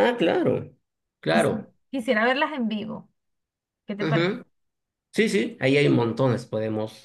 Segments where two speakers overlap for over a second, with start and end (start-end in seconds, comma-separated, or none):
none